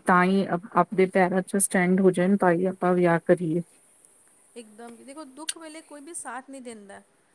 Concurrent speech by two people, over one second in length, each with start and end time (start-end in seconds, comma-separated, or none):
none